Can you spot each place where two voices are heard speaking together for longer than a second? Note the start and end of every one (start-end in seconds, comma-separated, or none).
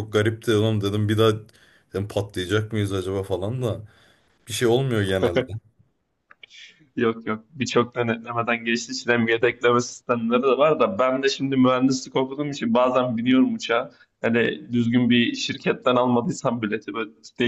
none